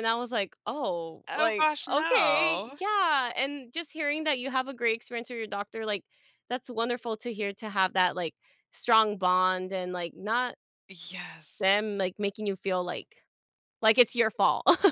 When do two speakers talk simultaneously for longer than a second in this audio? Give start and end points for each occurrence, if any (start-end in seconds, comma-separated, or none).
1.3-2.8